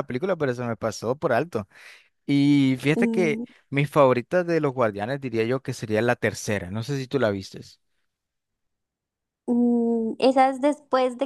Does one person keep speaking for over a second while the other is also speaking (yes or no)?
no